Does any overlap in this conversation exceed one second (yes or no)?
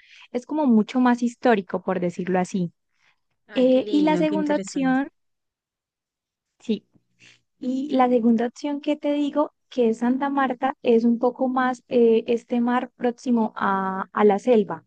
yes